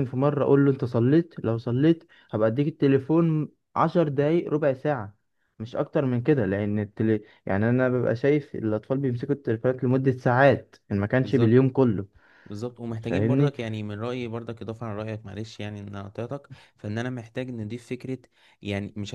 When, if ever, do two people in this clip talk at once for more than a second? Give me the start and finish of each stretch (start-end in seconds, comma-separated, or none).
none